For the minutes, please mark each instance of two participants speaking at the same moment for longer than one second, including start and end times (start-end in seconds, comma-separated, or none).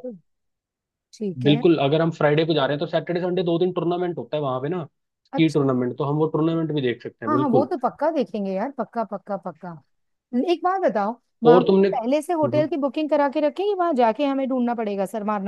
11.5-12.7